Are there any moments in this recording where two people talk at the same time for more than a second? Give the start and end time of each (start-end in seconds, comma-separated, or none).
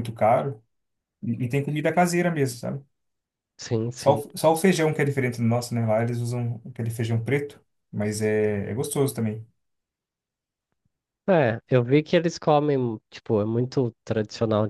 none